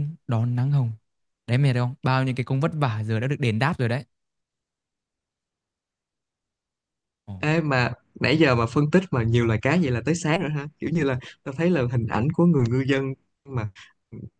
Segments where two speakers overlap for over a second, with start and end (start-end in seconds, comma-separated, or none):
none